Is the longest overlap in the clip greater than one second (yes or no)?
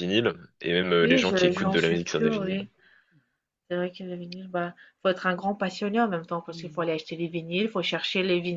yes